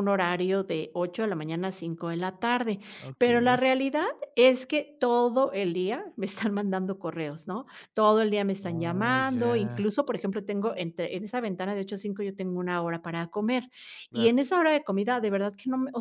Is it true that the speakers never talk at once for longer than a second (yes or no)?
no